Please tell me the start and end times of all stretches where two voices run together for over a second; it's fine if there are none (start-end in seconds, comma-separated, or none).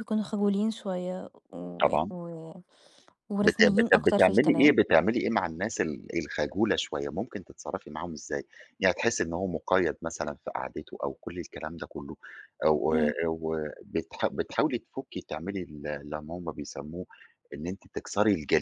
3.4-4.8